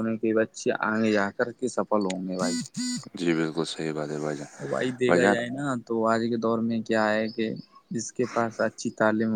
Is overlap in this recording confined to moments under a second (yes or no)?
yes